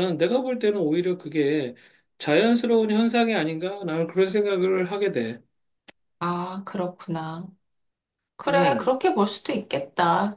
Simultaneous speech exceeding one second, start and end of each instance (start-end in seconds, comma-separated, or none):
none